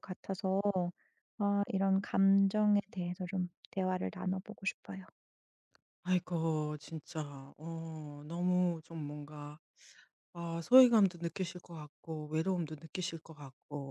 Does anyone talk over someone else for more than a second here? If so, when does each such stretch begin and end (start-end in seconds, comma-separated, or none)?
none